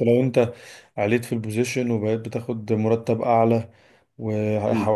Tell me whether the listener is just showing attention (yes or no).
yes